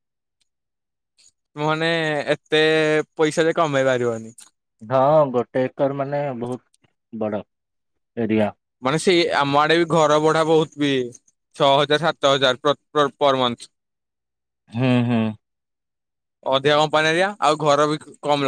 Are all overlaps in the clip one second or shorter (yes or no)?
yes